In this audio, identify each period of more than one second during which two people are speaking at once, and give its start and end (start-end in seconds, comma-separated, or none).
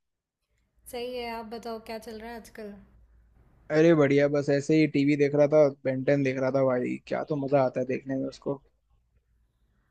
none